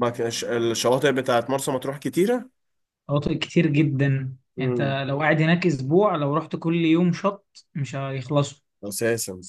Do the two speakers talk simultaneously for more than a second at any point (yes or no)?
no